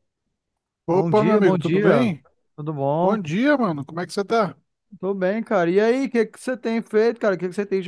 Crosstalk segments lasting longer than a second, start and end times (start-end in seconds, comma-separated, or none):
0.9-2.1